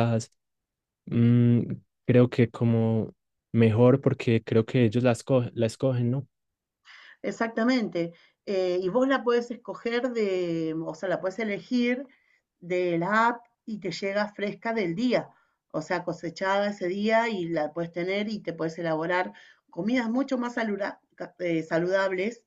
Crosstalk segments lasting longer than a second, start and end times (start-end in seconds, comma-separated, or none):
none